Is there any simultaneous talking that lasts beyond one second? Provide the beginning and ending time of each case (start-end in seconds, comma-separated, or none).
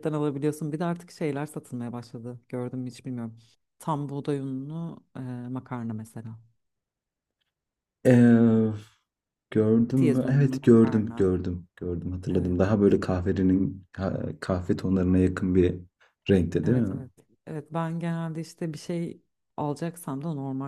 9.9-11.3